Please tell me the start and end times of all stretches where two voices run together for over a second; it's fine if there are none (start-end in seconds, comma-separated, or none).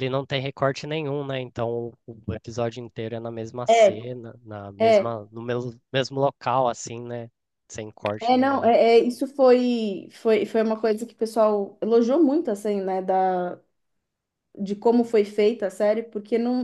none